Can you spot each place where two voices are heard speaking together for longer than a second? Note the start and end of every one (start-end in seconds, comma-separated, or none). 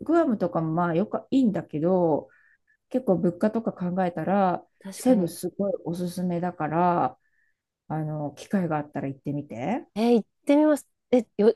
none